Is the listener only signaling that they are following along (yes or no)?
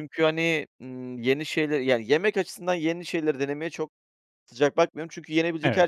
yes